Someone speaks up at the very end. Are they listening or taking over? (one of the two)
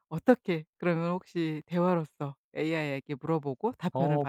taking over